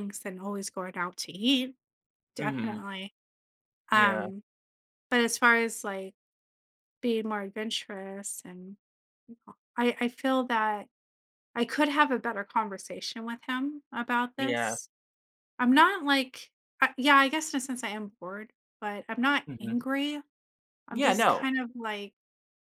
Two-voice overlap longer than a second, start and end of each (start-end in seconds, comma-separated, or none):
none